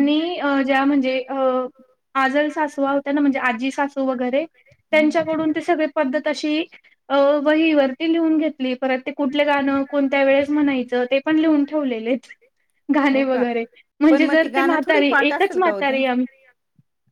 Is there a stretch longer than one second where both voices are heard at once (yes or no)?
yes